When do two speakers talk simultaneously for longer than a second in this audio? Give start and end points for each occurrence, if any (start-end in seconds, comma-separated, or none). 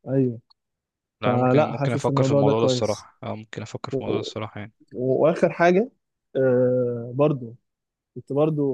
1.2-3.1